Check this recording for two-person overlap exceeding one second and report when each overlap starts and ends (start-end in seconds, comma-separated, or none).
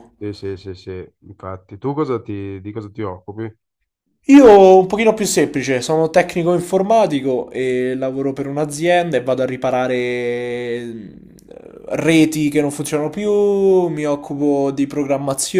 none